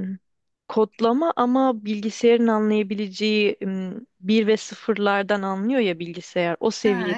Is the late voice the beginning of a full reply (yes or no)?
no